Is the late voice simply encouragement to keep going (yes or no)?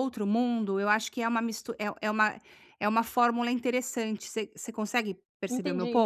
no